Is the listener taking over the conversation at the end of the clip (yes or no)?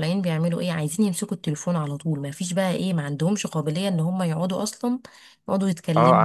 yes